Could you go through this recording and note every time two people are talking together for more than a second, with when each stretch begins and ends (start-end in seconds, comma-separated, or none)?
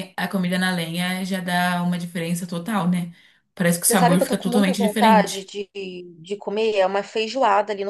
3.9-5.5